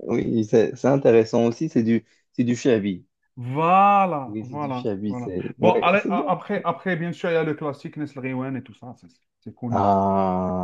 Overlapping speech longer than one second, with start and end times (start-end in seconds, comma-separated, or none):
4.3-6.3